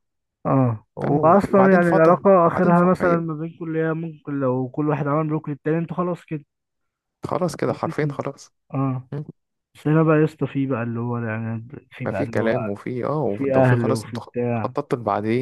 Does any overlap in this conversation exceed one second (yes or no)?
yes